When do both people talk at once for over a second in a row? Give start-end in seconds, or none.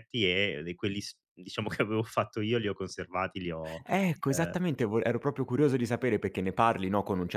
none